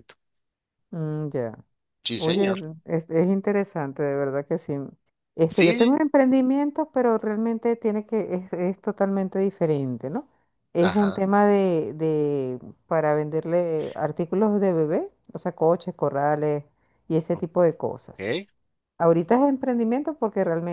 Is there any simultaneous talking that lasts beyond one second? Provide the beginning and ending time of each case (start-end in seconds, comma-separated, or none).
none